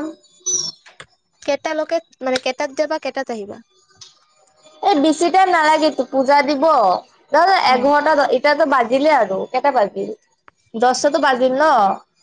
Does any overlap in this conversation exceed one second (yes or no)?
no